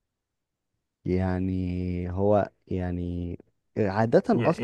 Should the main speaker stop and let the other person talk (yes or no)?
yes